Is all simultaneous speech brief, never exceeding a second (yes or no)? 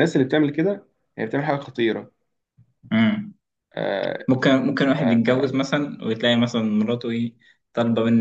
yes